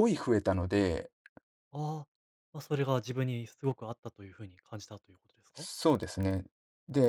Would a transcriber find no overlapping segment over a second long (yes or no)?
yes